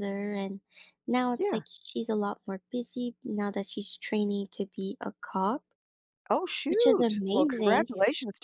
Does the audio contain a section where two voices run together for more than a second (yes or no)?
yes